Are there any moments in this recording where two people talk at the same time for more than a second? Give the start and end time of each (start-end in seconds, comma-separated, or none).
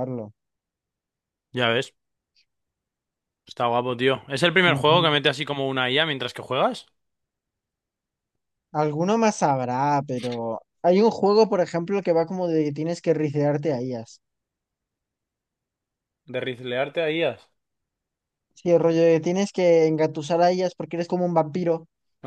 none